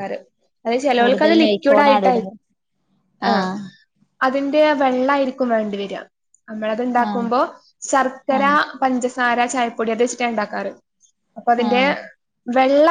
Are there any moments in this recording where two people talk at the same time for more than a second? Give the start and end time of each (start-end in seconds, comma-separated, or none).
1.0-2.3